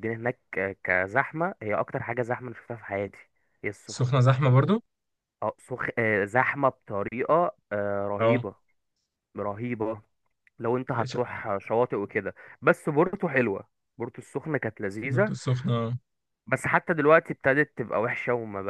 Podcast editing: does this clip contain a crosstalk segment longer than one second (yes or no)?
no